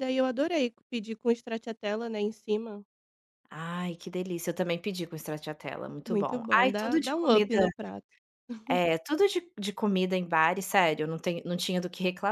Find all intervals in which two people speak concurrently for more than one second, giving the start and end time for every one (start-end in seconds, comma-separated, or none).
6.1-7.6